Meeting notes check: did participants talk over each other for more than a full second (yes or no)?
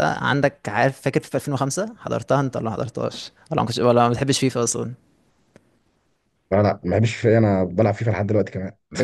no